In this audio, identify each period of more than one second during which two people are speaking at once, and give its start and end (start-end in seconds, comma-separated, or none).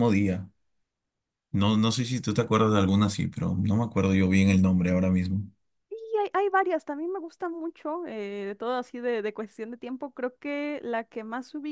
none